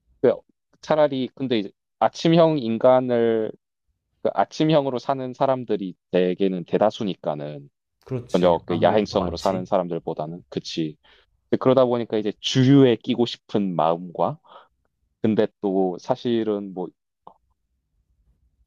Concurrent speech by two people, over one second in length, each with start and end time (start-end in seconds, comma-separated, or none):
8.3-9.7